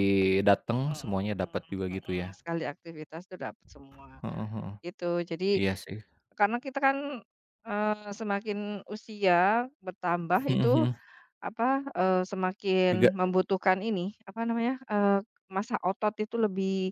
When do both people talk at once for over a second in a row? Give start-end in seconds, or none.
0.8-2.4